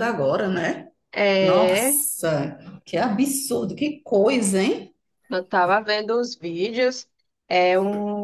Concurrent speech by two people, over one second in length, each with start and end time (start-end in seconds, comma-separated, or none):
none